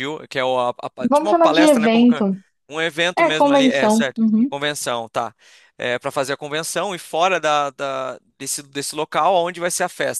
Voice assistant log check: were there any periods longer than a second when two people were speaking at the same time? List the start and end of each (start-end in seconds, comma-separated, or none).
1.0-2.2, 3.2-4.5